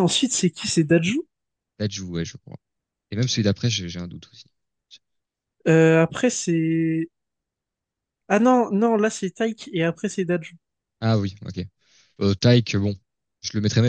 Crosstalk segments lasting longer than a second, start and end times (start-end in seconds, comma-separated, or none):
none